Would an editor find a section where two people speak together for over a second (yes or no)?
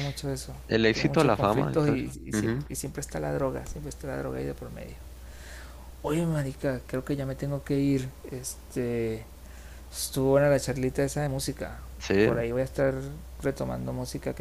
yes